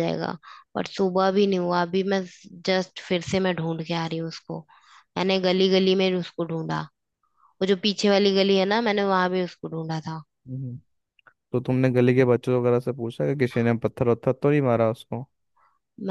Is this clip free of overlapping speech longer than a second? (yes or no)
yes